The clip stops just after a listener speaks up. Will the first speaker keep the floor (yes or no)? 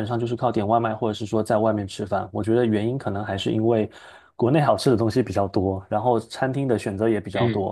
yes